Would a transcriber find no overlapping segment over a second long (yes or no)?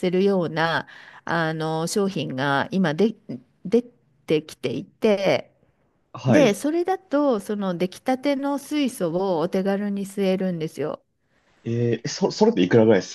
yes